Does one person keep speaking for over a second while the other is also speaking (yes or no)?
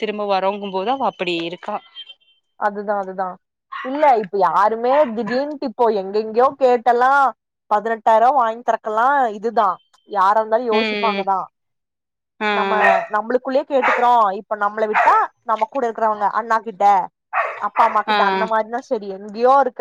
no